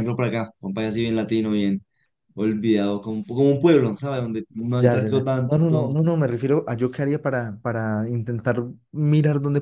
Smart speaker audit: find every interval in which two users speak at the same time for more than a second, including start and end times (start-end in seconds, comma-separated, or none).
4.8-6.0